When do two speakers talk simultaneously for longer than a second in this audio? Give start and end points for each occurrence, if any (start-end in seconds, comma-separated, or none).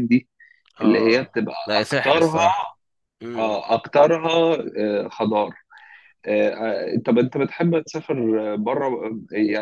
0.8-2.4